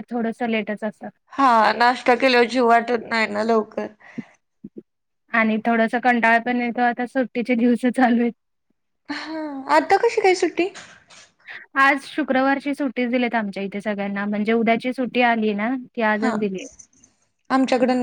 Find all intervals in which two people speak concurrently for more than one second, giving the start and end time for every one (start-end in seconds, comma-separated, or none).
none